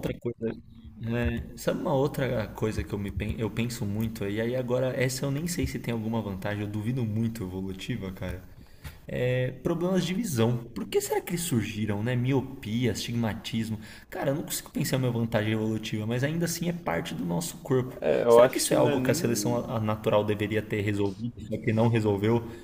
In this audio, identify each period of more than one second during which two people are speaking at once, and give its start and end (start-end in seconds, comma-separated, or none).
18.0-19.6